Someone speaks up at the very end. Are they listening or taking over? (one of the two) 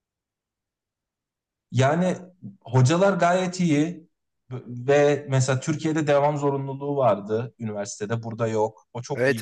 taking over